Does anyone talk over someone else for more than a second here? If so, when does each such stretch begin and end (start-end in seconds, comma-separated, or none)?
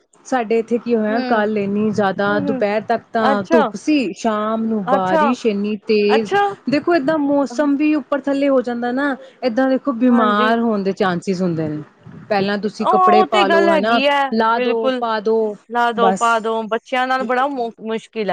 12.8-15.0